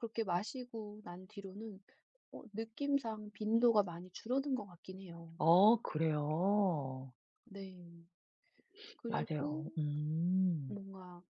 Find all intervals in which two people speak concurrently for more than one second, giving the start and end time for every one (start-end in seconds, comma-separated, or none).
none